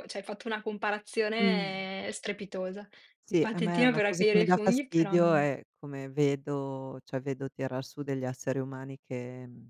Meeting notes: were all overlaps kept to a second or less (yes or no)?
no